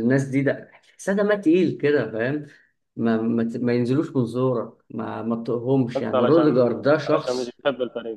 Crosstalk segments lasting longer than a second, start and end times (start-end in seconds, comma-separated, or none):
6.0-7.6